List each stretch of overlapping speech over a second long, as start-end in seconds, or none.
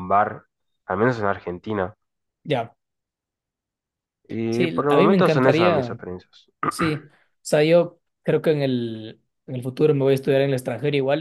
4.5-6.0